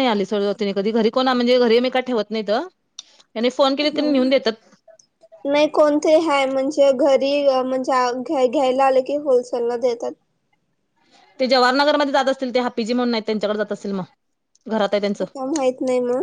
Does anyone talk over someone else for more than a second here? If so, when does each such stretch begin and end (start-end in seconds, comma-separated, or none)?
none